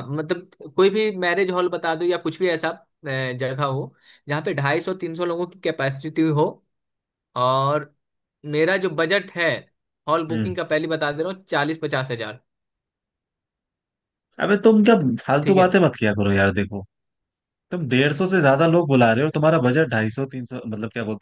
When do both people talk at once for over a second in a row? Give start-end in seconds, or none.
none